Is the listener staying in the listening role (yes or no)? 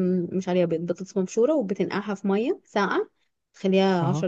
yes